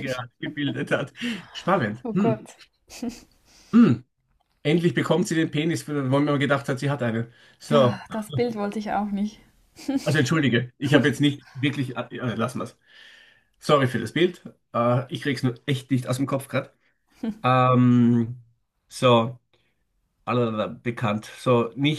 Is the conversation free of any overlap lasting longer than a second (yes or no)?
yes